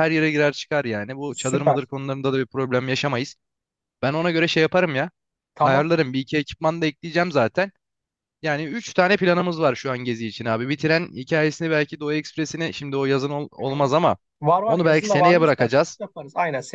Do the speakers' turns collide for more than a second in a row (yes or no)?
yes